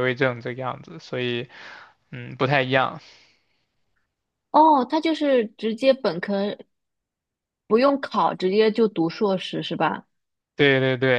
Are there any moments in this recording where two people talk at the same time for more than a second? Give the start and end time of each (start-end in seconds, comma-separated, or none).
none